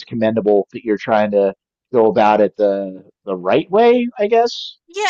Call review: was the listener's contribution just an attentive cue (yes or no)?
no